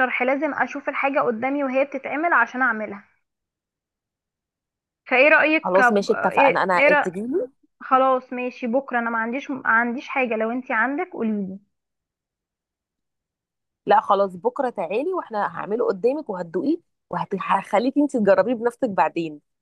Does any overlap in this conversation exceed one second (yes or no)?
yes